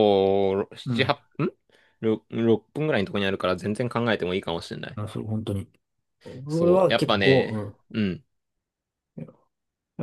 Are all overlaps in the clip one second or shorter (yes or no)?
no